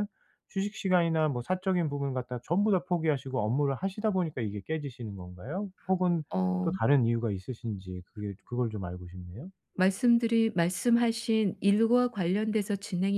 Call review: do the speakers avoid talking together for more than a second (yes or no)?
yes